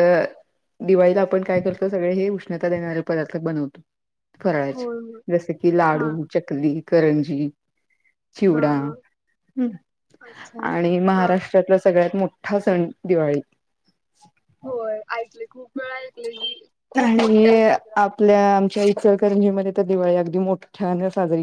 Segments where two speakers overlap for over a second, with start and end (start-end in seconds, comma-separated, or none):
none